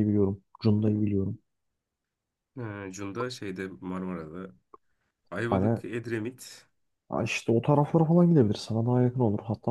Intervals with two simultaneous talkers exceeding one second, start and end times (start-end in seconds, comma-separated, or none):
none